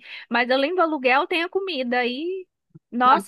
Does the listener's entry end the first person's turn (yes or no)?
no